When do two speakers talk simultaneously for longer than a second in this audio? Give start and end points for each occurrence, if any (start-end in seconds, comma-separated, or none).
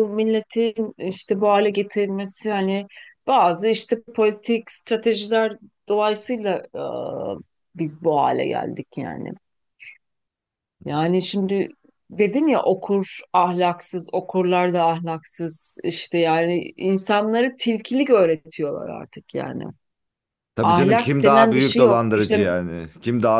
20.6-22.5